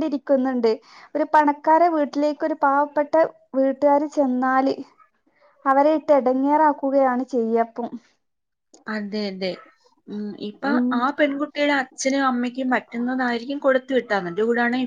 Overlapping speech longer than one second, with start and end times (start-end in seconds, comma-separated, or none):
none